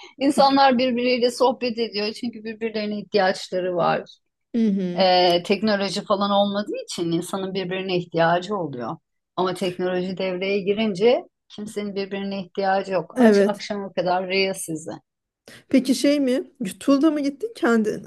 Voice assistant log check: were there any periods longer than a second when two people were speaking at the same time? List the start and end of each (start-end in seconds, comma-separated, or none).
none